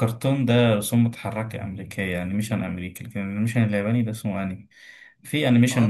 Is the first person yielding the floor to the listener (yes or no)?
no